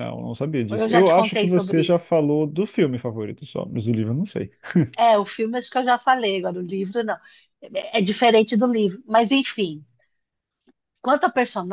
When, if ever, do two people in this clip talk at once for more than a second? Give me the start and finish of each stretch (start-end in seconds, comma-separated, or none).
0.7-2.1